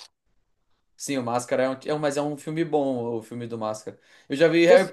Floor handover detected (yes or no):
no